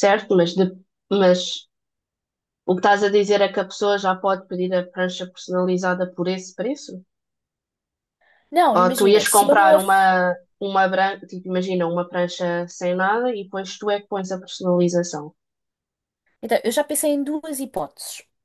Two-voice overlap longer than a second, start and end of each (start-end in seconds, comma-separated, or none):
8.8-10.0